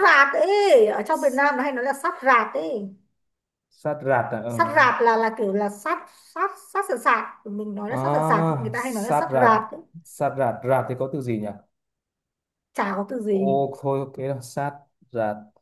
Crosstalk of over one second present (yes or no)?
yes